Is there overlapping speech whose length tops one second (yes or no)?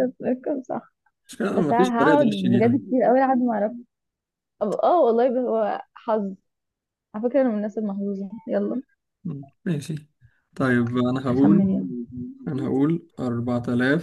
yes